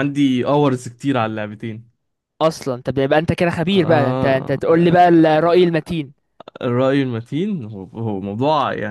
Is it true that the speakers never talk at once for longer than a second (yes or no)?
no